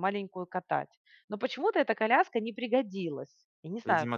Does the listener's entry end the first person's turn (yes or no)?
yes